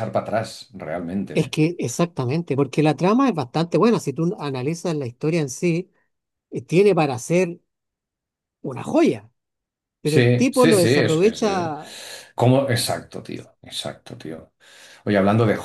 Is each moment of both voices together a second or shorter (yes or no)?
no